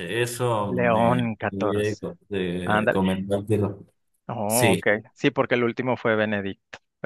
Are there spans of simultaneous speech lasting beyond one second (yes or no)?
yes